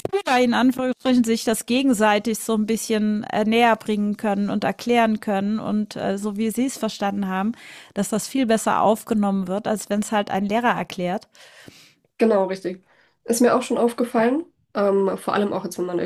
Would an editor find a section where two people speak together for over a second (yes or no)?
no